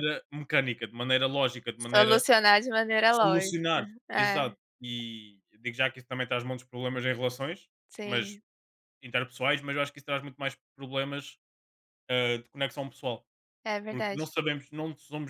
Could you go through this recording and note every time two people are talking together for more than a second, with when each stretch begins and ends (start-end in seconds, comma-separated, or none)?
3.1-4.6